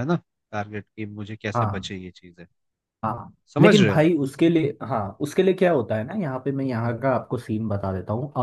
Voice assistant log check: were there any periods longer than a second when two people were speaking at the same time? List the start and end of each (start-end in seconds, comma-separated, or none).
none